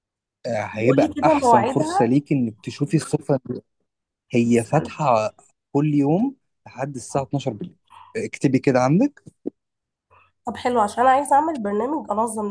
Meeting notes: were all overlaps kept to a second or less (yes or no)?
no